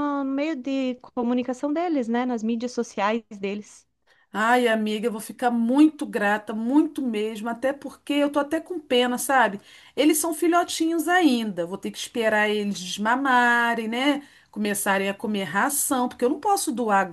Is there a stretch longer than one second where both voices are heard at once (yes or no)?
no